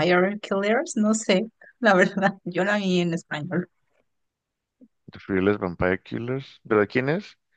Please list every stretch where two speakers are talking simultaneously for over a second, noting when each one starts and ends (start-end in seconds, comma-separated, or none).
none